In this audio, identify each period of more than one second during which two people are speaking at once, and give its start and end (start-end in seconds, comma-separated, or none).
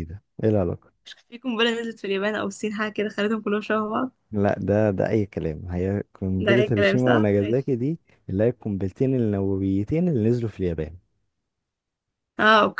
6.4-7.7